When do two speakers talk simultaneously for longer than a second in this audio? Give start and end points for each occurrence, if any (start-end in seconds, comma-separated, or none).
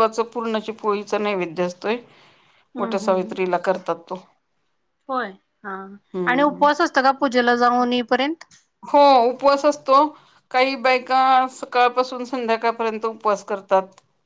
none